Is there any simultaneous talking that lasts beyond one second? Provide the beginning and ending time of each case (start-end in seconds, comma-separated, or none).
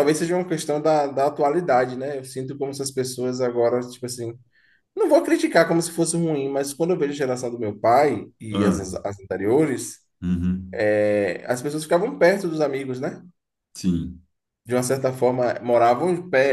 none